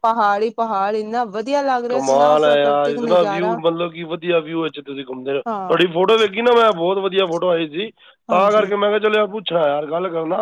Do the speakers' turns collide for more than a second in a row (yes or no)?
yes